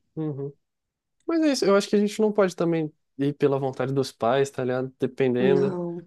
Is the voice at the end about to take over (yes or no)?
no